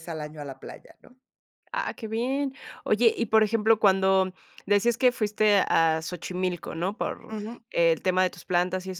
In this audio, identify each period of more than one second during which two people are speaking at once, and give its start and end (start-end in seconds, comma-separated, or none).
none